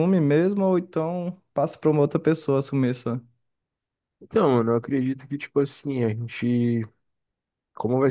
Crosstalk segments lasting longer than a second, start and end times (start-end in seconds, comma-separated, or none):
none